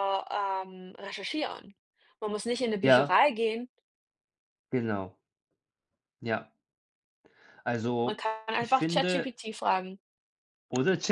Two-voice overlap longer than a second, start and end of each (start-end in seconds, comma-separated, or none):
8.0-9.4